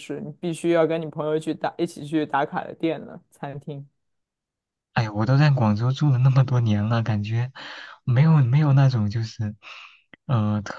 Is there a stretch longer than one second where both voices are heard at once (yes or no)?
no